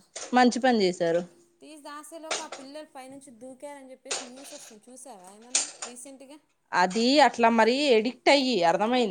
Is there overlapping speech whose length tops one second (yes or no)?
no